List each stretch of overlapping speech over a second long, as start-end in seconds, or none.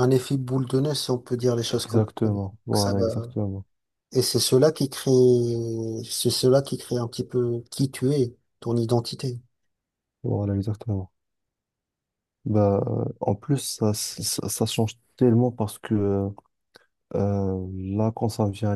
1.7-3.3